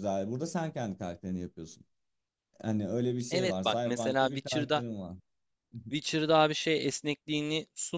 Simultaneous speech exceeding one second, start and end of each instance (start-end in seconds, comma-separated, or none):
3.3-4.8